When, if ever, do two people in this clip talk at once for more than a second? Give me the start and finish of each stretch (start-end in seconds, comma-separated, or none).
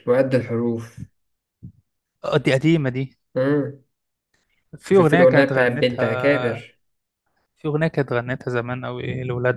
4.9-6.6